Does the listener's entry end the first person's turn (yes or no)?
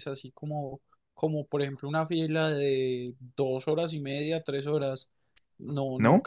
no